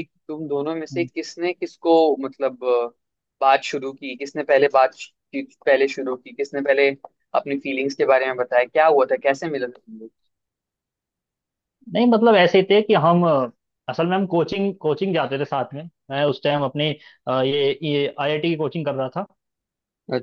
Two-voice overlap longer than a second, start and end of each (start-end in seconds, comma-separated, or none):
none